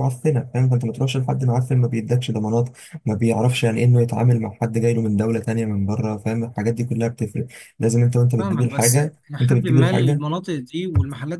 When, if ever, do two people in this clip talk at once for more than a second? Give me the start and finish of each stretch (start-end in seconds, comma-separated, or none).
8.4-10.2